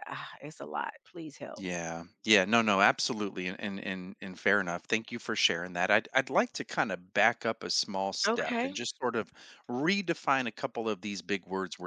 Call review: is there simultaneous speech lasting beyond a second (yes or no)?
no